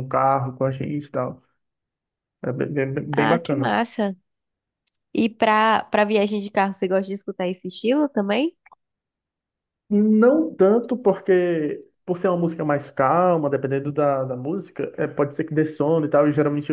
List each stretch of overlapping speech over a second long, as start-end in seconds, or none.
none